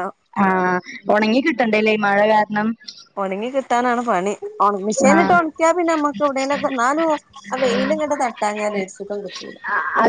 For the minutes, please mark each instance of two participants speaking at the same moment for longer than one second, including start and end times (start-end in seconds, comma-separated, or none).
none